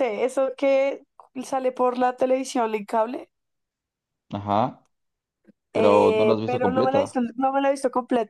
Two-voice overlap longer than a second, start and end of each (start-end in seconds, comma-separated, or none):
5.7-7.2